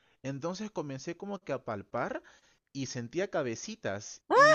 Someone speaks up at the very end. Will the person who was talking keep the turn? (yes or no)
yes